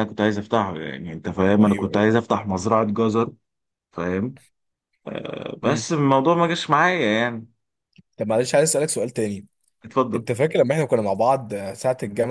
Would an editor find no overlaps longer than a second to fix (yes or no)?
yes